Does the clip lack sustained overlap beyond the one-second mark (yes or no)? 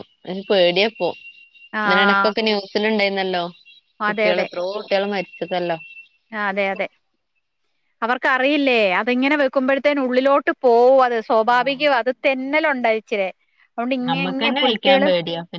yes